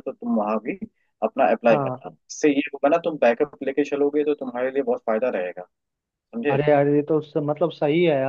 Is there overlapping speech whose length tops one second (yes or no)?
no